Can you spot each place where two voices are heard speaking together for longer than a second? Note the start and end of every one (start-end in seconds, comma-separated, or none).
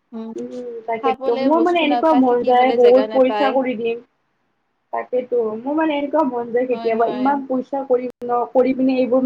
1.0-3.5